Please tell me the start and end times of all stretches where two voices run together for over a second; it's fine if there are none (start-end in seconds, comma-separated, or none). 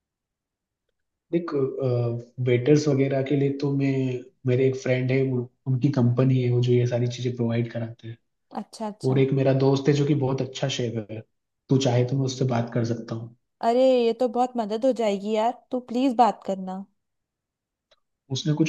none